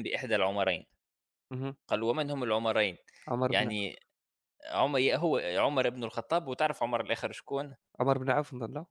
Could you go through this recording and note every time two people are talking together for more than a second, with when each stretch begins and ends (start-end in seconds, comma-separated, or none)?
none